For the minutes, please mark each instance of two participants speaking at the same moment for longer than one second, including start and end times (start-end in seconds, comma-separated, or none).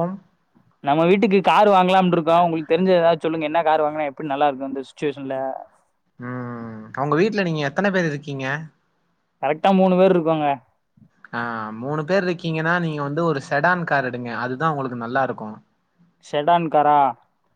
none